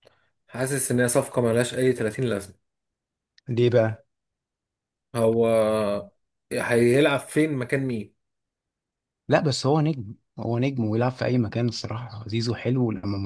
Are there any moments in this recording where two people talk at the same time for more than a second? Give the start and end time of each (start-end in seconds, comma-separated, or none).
none